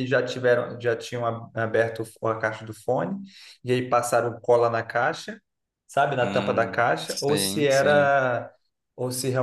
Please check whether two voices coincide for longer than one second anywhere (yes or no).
yes